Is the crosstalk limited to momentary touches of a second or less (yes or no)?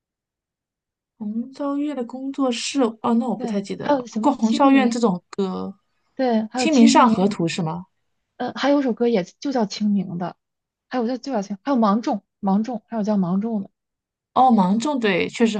no